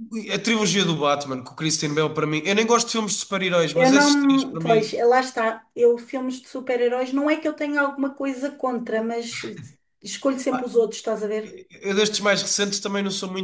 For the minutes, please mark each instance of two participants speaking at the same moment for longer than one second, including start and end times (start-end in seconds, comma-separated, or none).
3.8-5.0